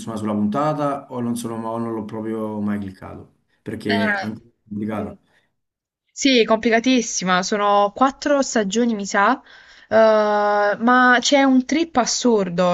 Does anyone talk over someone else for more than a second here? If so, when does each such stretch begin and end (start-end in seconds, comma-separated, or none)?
3.9-5.1